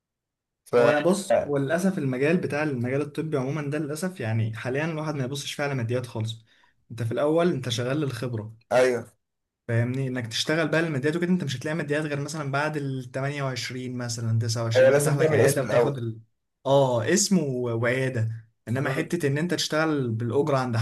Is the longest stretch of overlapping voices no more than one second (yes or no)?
no